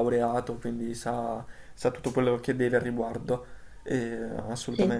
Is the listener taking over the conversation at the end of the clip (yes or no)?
no